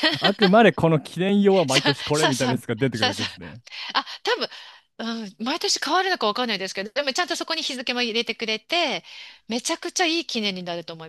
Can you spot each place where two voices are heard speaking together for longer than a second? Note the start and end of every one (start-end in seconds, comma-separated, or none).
1.7-3.2